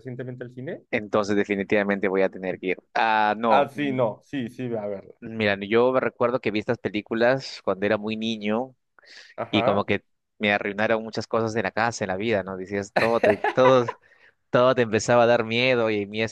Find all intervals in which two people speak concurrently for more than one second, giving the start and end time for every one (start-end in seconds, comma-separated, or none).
none